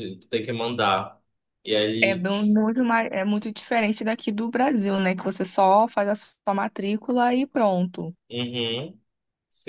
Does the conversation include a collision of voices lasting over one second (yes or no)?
no